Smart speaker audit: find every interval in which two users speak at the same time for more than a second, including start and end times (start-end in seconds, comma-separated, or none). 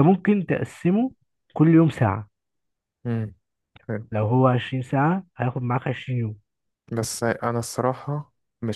none